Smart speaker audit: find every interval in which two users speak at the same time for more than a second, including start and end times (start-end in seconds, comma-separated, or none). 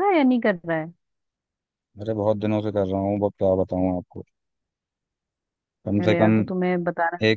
none